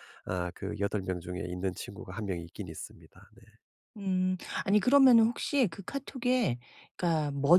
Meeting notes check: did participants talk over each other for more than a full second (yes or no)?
no